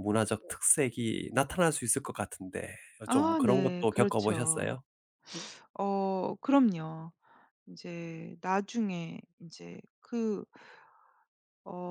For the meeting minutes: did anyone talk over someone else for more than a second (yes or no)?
yes